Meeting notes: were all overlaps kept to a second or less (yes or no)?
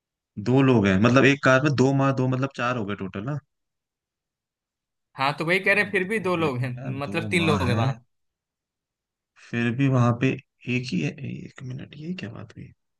no